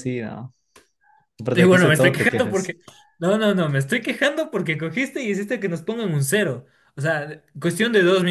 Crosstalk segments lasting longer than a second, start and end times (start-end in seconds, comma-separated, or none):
1.5-2.8